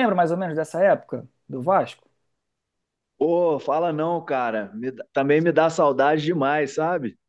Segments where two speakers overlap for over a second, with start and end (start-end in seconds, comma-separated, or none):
none